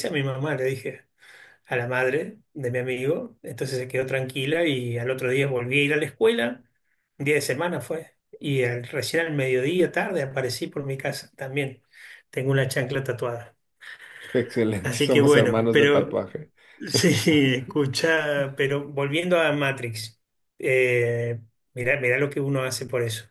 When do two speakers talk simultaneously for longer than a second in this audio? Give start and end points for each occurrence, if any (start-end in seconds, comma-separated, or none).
14.8-16.2